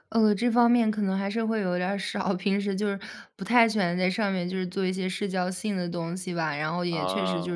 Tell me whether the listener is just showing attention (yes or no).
yes